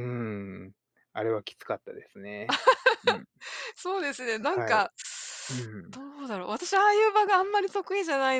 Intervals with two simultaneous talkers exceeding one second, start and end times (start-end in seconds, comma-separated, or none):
none